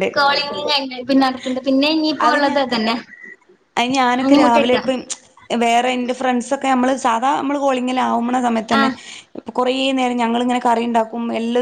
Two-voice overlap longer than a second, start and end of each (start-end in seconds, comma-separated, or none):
none